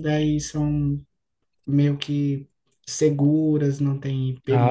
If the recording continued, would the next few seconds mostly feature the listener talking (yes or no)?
yes